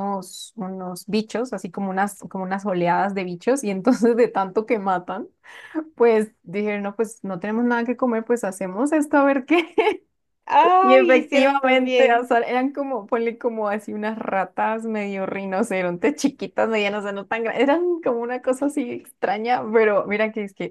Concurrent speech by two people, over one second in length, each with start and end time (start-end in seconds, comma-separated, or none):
10.8-12.3